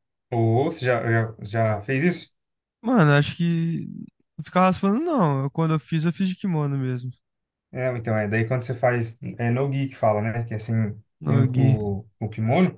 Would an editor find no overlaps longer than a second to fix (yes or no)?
yes